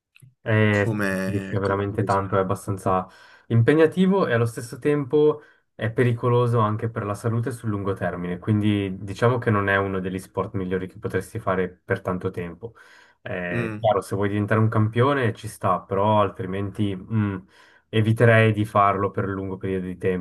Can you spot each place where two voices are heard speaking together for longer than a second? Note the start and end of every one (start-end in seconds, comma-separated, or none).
0.7-2.2